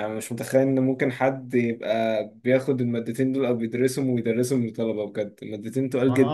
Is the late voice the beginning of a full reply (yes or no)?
yes